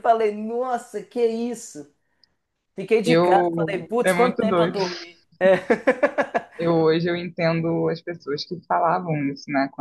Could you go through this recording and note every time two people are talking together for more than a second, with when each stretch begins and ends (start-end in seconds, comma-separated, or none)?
3.0-4.8